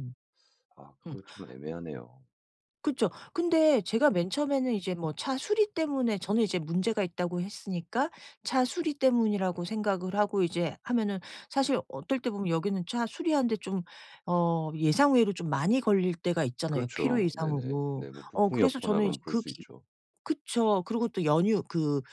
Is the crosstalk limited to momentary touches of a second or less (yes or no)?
no